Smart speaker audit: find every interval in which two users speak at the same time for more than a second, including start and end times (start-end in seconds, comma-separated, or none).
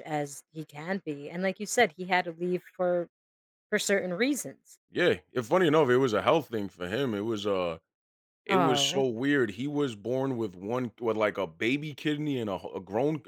none